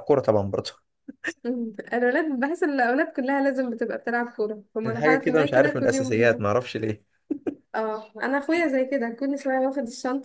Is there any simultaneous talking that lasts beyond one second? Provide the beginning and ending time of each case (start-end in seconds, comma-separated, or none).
4.9-6.5